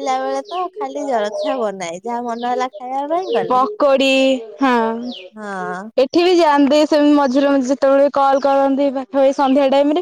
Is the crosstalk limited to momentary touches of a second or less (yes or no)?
yes